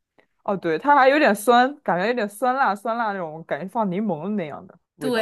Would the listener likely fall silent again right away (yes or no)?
no